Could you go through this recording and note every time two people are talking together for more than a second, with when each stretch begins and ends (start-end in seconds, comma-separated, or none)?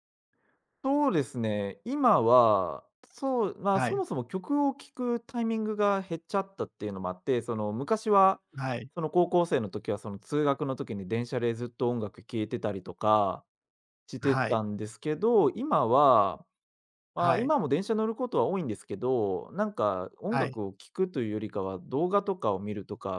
none